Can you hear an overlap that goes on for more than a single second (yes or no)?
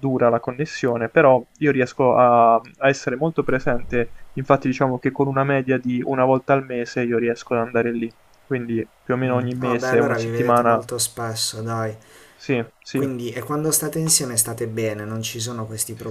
yes